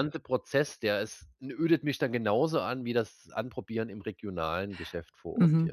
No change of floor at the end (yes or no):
no